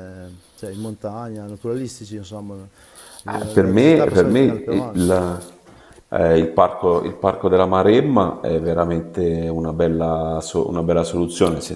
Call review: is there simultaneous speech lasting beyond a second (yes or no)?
yes